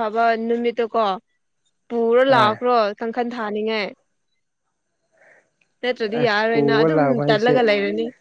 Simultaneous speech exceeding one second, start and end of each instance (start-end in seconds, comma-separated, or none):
6.2-7.6